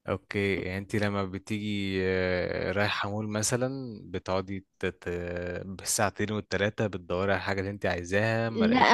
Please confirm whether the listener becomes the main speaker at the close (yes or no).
yes